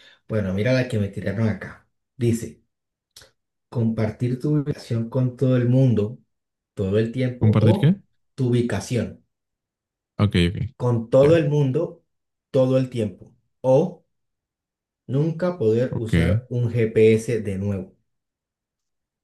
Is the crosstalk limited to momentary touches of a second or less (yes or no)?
yes